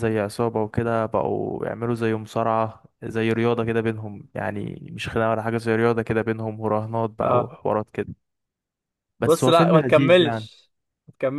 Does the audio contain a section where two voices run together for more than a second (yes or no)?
yes